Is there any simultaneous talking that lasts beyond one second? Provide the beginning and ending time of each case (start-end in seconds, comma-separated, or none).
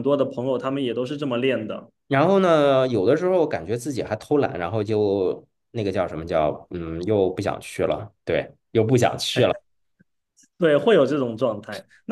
none